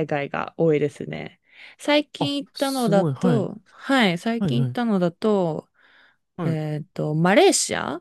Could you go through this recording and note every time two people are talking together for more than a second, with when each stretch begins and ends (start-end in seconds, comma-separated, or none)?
2.2-3.5